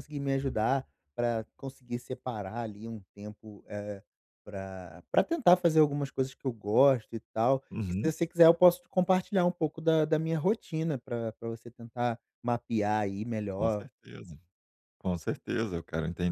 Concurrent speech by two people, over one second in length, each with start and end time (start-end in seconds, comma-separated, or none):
none